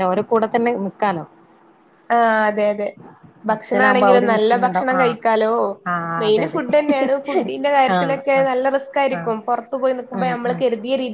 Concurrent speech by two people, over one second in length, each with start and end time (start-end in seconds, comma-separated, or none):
3.5-5.2